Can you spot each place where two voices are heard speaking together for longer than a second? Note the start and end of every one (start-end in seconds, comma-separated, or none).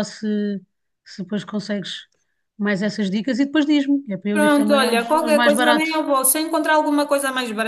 4.3-6.0